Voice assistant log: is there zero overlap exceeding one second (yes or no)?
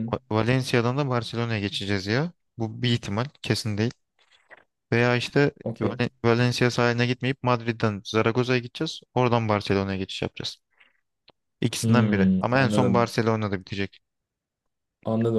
no